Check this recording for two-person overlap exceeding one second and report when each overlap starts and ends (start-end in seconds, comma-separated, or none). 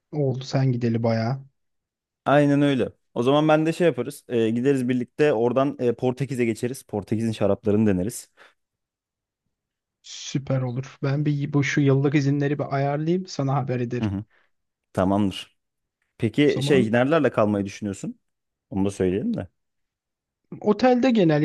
none